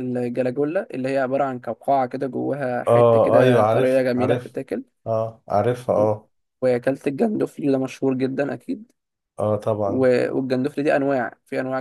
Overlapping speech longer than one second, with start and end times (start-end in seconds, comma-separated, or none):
2.9-4.6